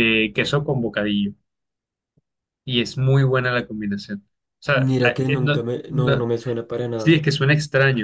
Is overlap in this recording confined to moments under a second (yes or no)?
no